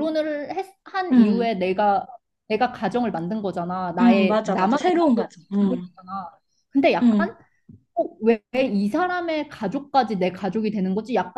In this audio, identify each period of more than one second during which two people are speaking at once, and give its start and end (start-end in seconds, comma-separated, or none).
4.0-5.9